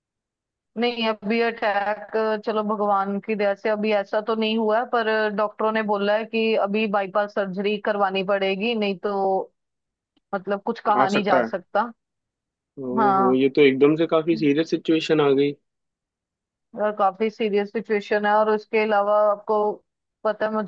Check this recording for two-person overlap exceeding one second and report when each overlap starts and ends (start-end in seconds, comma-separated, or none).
none